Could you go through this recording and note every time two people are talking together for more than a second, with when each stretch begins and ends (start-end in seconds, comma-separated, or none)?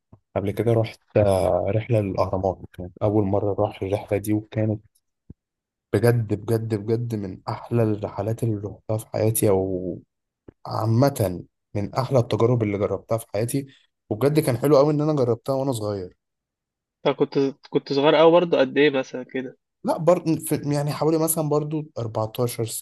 none